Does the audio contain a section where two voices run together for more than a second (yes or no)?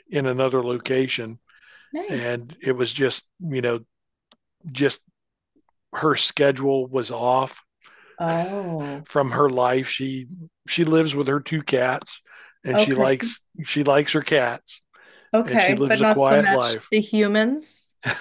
yes